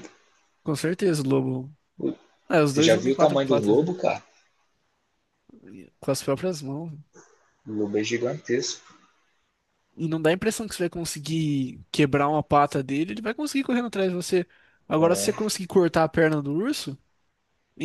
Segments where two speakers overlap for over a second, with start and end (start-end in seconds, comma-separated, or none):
2.7-3.9